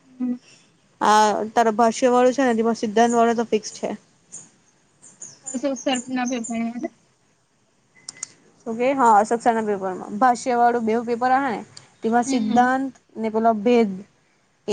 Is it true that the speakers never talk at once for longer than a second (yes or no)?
yes